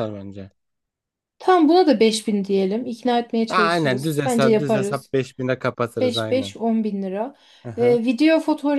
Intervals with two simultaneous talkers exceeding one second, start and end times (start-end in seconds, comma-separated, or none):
3.5-5.1